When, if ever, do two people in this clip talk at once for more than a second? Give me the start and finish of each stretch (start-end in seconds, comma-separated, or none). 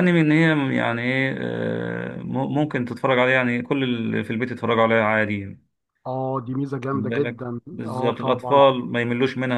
6.9-8.6